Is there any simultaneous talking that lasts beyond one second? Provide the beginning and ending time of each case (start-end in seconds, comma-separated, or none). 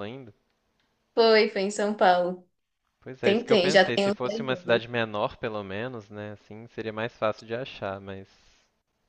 3.2-4.8